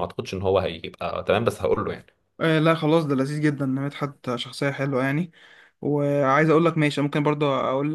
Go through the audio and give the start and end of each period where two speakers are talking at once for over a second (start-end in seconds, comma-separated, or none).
none